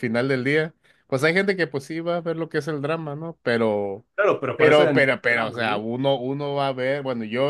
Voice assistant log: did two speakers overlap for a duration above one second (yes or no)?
yes